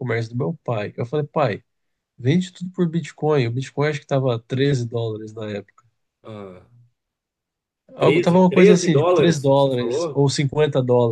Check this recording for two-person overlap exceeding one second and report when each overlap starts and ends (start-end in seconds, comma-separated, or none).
8.0-10.3